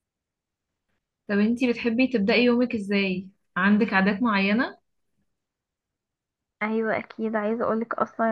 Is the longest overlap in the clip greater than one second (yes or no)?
no